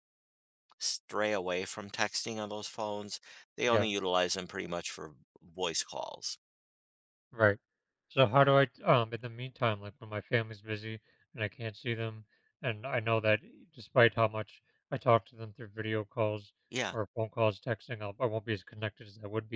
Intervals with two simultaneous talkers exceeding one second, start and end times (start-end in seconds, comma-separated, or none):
none